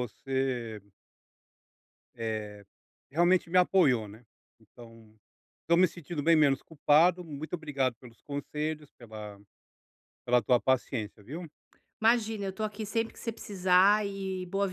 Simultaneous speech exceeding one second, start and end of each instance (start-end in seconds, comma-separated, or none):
none